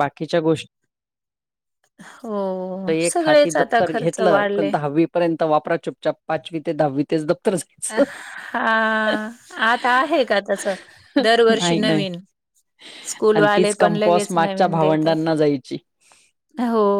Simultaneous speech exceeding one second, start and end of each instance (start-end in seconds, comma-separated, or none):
13.3-15.2